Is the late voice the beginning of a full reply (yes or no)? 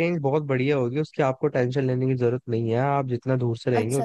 yes